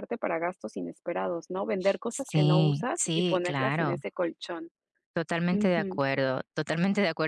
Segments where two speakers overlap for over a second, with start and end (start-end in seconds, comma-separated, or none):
2.1-4.0